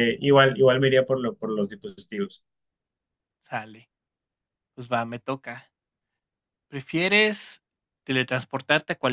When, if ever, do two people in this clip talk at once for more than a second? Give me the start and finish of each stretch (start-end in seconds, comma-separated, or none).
none